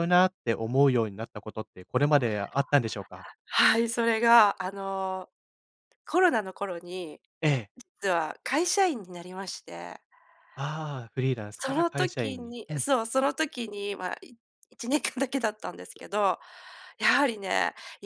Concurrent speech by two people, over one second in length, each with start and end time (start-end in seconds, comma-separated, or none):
11.6-12.8